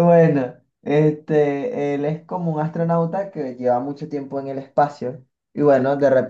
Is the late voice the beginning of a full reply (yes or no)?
no